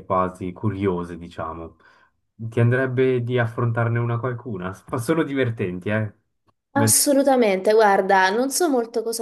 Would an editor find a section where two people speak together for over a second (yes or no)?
no